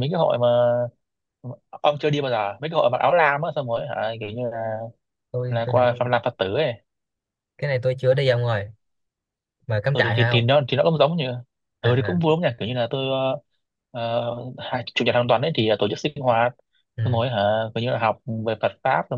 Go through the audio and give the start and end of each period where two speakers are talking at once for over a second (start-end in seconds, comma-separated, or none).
none